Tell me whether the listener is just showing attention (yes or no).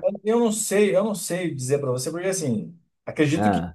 yes